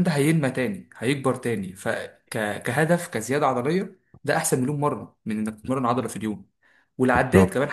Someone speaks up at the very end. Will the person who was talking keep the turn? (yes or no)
yes